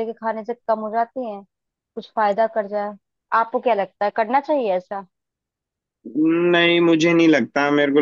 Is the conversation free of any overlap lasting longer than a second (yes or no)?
yes